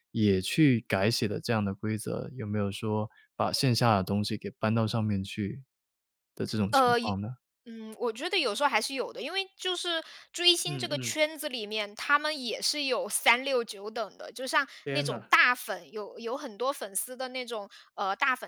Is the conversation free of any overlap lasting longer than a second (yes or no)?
yes